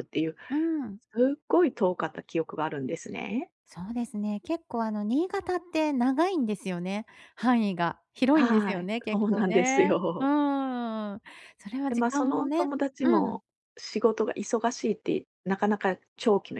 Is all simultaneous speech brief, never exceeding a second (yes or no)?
no